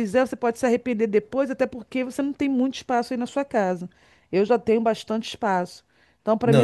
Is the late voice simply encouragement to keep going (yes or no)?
no